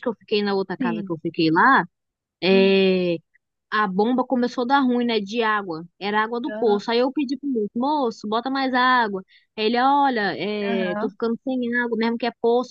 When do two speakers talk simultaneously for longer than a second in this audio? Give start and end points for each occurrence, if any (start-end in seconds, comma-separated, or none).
none